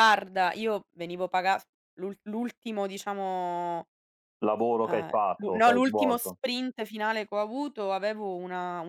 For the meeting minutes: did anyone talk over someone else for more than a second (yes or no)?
yes